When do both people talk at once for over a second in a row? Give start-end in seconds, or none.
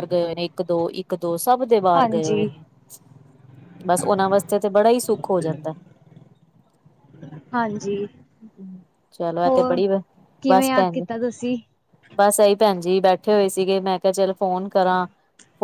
none